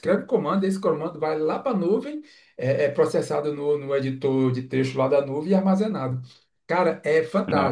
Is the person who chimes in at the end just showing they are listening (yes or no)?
yes